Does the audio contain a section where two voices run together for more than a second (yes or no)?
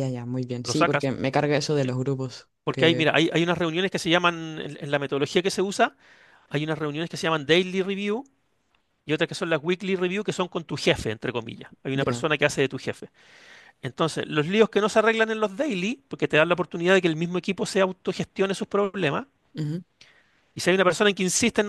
no